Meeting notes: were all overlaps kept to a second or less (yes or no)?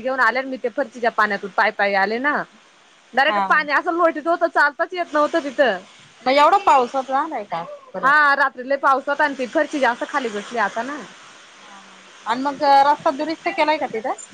yes